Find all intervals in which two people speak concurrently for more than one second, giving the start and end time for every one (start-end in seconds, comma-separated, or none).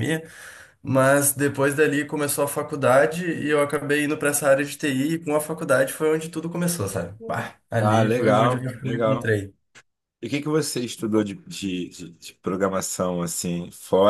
7.8-9.3